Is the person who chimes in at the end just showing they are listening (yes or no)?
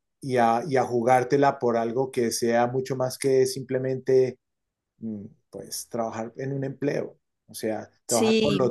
no